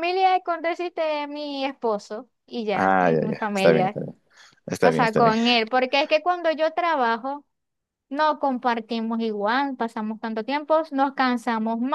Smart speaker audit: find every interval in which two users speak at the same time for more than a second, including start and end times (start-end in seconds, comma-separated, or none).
2.7-4.0